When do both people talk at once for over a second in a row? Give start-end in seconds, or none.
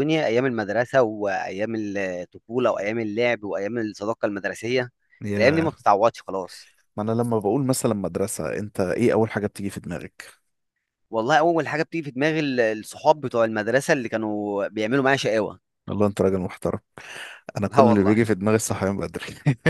none